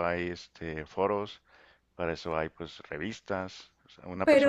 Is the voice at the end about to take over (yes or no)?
no